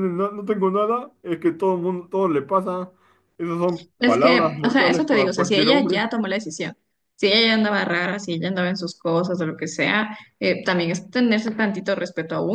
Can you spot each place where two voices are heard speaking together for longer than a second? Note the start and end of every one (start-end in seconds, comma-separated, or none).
4.0-6.0